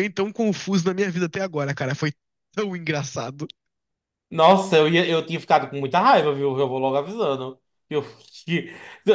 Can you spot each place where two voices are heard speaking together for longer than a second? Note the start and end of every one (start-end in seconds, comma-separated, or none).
none